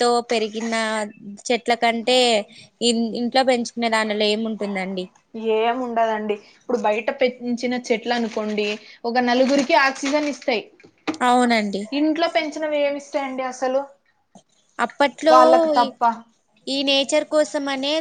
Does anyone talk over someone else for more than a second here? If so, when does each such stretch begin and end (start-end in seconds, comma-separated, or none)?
none